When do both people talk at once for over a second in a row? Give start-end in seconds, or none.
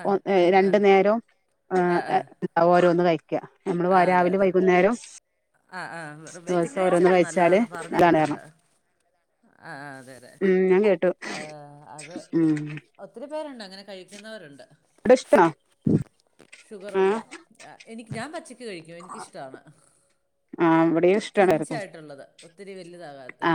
6.5-8.4